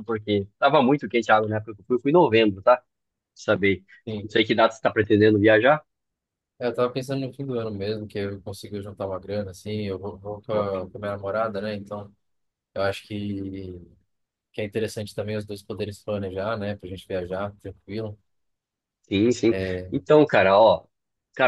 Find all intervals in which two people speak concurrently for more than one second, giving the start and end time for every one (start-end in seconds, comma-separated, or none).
none